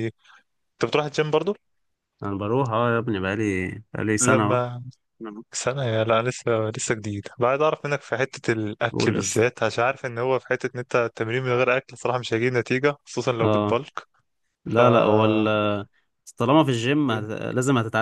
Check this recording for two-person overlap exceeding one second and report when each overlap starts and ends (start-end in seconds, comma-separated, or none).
none